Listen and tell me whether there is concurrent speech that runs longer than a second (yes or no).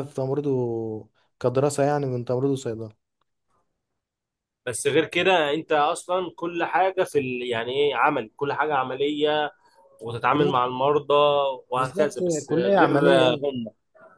yes